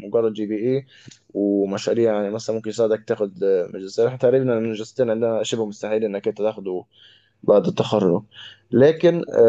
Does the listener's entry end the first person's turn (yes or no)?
no